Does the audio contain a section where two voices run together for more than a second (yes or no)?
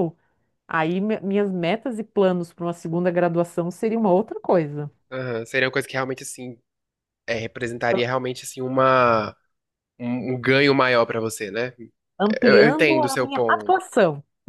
yes